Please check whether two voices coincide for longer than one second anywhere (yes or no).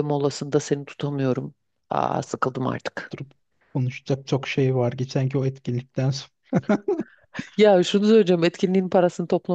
no